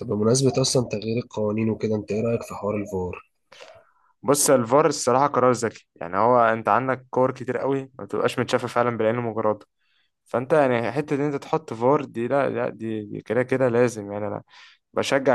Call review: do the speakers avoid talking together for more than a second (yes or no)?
yes